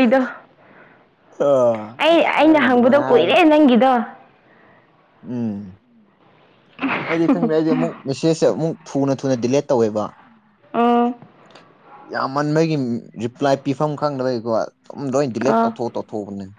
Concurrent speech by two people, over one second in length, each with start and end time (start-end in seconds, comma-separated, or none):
2.0-3.3